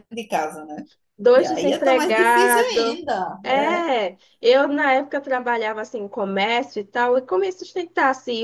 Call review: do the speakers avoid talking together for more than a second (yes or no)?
no